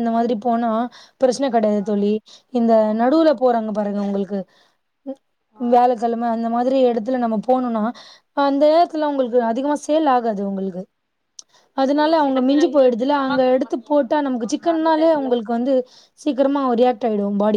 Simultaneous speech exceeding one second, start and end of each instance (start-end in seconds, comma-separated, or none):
12.0-15.3